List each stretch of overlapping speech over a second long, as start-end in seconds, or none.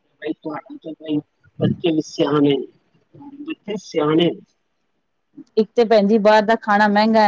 none